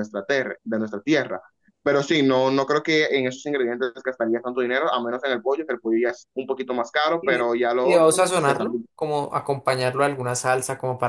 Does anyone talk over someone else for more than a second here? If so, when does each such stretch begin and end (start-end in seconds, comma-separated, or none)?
7.2-8.8